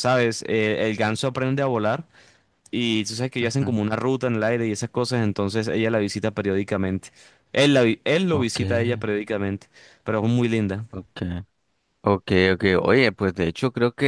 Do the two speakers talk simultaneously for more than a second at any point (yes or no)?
no